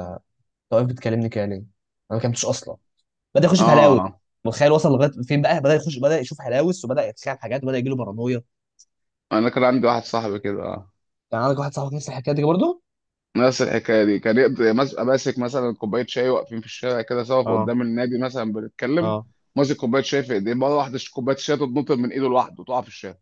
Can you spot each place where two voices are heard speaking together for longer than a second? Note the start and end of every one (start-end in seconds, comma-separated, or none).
none